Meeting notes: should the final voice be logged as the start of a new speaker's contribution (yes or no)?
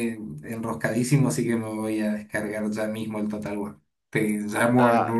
no